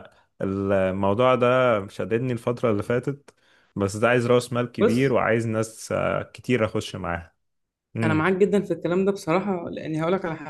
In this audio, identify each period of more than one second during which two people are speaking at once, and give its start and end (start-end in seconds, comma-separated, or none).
none